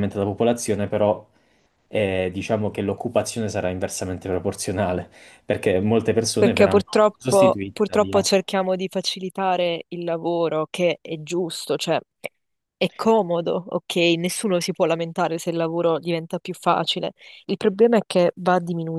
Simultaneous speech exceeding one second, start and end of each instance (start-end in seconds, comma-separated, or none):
6.3-8.3